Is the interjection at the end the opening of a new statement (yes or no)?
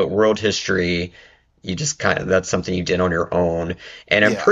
no